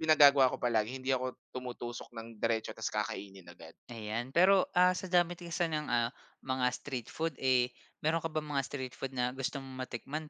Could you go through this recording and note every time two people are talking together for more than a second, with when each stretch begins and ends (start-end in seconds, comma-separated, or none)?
none